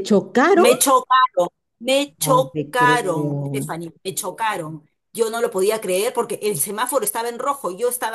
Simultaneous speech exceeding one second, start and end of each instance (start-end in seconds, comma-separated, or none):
2.2-3.8